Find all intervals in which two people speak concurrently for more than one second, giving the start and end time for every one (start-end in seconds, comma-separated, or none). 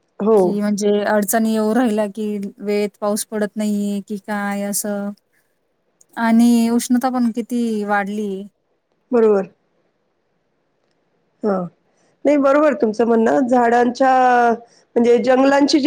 none